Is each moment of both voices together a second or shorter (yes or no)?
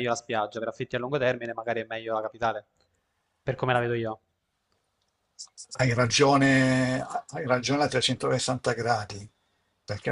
yes